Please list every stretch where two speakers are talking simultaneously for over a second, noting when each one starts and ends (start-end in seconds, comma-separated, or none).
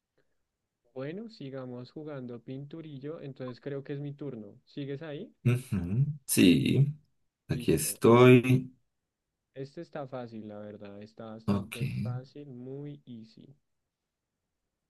none